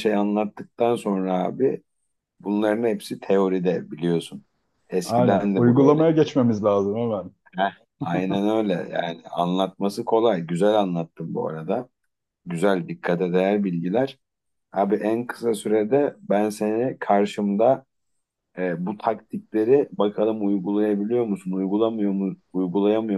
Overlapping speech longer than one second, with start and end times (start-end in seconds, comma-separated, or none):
5.0-6.3